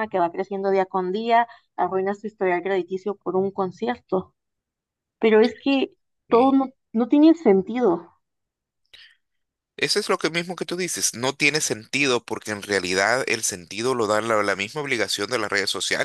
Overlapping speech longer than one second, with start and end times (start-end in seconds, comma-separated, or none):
none